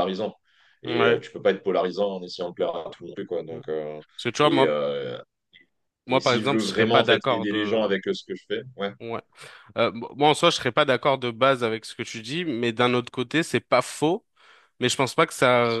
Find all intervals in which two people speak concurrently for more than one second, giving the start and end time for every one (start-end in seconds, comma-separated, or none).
6.1-8.0